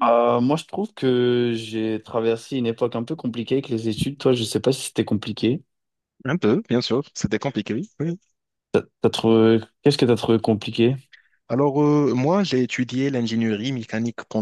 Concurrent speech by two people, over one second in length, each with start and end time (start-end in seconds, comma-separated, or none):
none